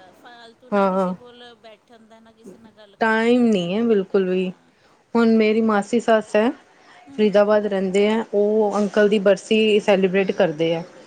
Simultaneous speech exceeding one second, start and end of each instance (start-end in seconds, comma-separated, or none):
3.0-4.5